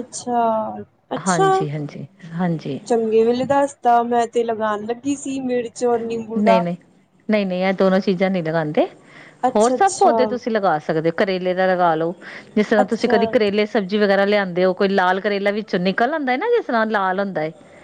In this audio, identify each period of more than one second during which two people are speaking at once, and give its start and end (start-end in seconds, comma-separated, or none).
none